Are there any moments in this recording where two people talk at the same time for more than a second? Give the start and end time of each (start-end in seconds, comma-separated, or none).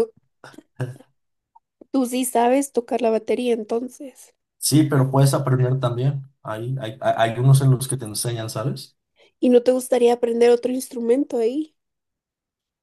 none